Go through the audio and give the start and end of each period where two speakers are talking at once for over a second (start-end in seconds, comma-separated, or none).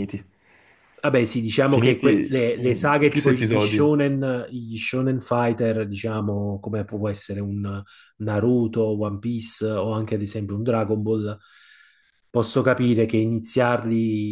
1.6-3.8